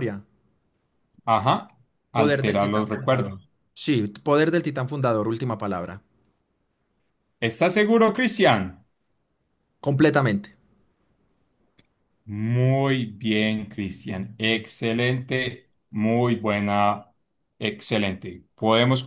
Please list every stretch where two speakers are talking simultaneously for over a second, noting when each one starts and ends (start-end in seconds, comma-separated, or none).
2.1-3.4